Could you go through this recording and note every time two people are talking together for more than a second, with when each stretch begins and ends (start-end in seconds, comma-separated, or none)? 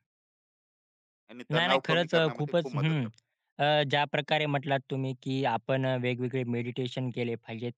1.5-3.1